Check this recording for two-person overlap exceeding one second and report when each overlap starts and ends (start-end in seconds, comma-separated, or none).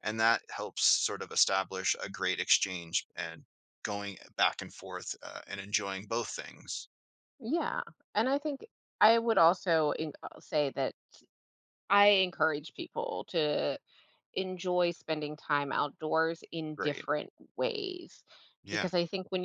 none